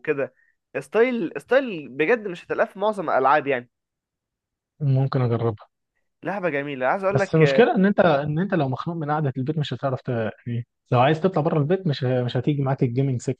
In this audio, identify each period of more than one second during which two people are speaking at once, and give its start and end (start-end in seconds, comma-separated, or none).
none